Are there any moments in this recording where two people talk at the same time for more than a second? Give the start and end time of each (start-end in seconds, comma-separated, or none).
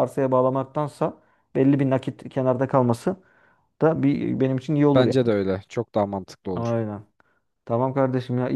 none